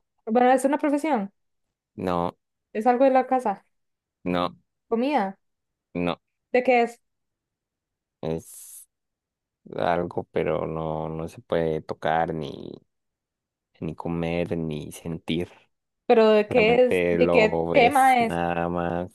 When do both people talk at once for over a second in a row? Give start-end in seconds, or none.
16.5-18.4